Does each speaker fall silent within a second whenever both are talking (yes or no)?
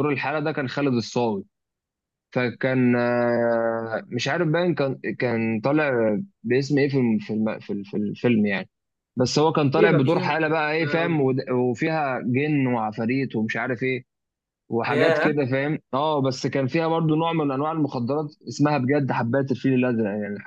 no